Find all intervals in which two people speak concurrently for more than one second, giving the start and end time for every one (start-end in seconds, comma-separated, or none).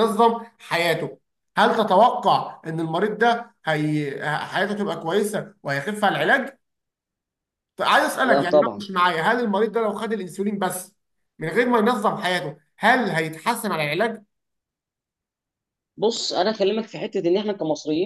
none